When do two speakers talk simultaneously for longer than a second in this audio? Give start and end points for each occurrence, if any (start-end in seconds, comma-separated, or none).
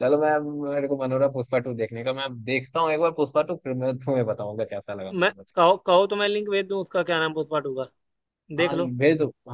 none